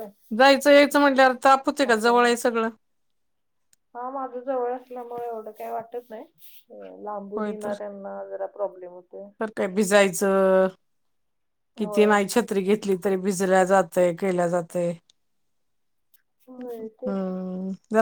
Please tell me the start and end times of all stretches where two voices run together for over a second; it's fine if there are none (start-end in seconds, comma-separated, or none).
none